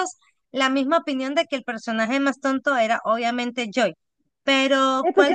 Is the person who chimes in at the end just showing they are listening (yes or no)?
no